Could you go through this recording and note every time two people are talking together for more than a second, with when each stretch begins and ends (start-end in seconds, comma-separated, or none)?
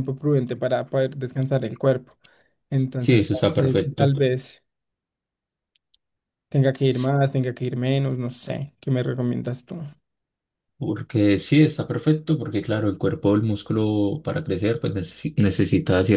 2.7-4.1